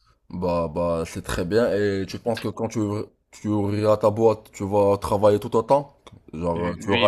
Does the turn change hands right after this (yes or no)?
yes